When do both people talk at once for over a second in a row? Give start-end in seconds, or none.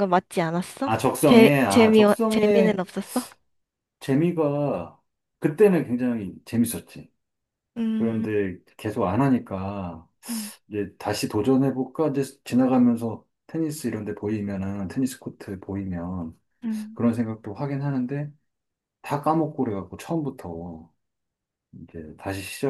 0.8-2.8